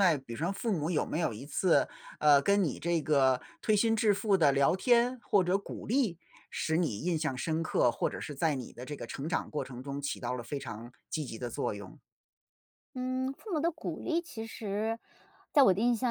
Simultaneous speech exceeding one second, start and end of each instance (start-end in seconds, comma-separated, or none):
none